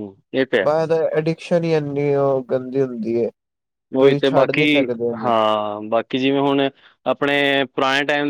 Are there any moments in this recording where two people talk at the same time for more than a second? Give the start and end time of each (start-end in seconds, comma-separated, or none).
none